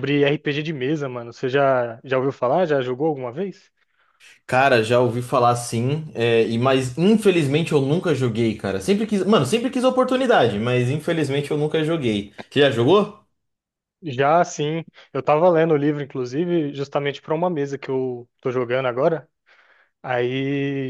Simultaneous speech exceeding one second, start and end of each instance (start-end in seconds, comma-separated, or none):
none